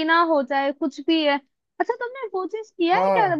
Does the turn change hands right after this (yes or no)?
no